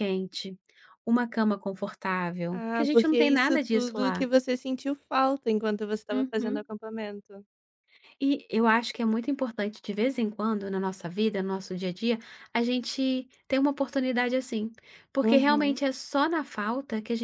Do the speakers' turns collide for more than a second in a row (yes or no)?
yes